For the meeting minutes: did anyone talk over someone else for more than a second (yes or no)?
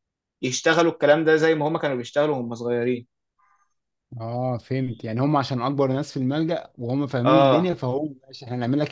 no